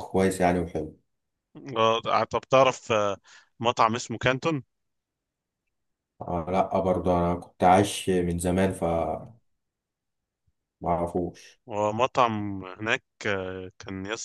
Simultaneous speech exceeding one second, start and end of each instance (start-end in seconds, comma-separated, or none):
none